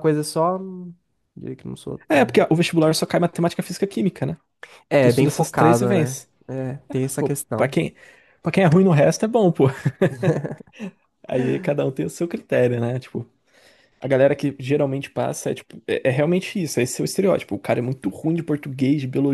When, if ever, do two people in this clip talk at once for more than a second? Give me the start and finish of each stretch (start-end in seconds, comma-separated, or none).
5.0-6.3